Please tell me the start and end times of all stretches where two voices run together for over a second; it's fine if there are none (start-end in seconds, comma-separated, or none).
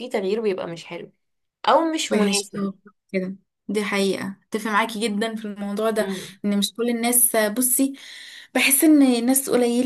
none